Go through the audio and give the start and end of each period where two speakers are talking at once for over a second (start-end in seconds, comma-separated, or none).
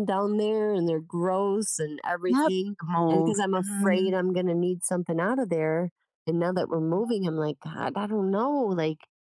2.3-4.1